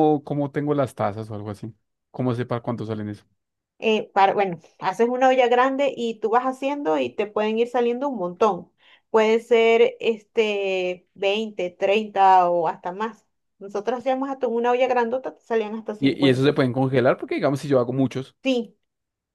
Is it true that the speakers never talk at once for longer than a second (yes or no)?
yes